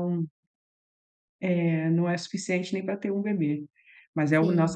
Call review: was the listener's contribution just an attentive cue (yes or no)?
yes